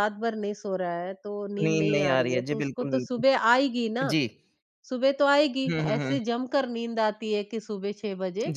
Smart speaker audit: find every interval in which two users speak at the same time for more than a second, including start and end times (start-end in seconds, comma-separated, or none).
1.6-3.2